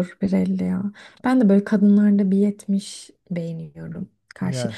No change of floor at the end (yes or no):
yes